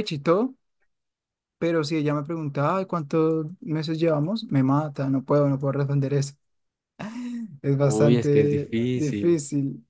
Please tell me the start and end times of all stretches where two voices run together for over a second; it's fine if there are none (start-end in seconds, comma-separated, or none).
7.8-9.4